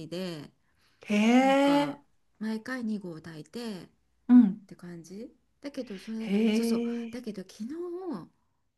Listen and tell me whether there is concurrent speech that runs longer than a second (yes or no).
no